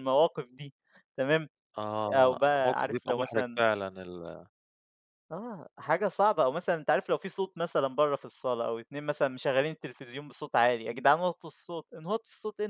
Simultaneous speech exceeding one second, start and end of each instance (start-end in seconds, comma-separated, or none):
2.1-3.6